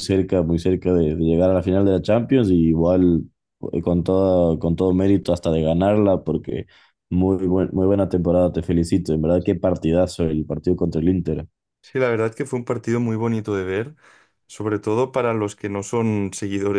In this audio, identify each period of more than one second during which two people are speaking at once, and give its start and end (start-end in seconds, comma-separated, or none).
none